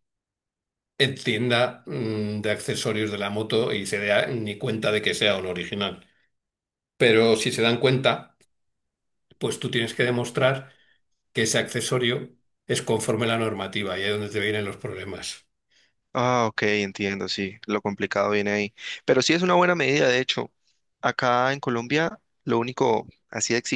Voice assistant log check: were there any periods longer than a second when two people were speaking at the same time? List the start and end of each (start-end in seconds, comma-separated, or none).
none